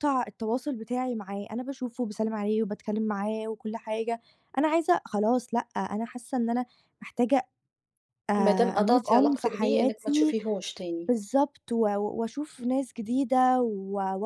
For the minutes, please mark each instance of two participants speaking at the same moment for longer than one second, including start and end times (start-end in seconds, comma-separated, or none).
8.4-10.3